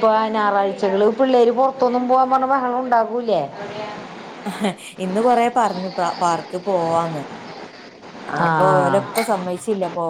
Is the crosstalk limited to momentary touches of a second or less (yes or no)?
yes